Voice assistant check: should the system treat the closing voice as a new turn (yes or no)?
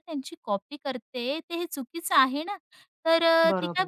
no